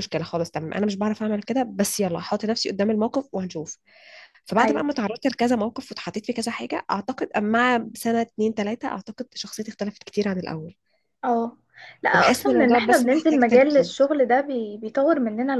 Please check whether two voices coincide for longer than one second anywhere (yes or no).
yes